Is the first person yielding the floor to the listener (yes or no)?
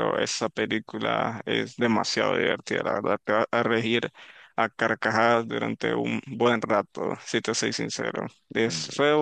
no